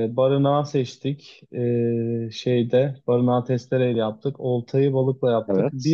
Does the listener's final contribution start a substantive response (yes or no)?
no